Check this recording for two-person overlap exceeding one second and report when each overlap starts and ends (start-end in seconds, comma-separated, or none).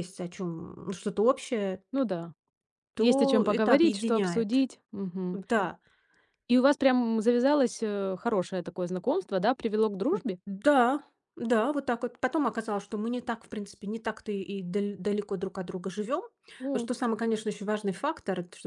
3.0-4.6